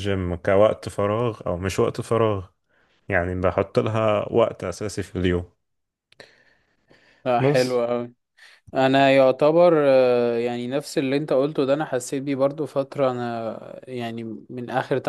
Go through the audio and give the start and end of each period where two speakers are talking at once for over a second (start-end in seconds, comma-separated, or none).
none